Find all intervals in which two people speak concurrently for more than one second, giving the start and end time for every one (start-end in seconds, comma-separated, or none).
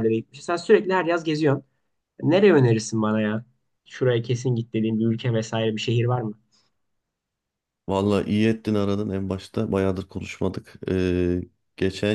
none